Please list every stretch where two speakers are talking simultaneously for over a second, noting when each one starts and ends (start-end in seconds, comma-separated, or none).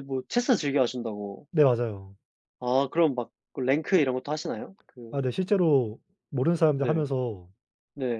none